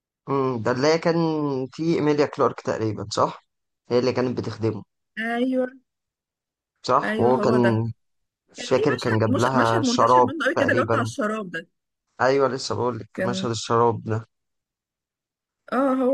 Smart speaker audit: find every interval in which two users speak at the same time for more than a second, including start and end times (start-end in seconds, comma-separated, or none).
8.6-11.1